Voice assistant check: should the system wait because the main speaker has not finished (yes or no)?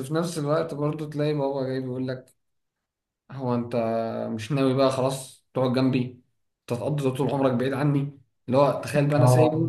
yes